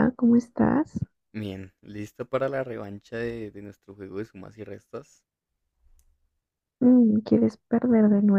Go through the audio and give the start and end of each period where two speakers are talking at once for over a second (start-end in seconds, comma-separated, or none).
none